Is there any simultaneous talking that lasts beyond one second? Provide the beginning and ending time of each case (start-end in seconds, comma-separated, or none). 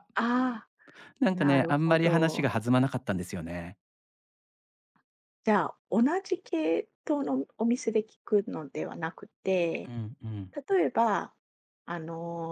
1.3-2.5